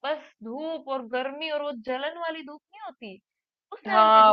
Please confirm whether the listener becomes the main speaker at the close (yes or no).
yes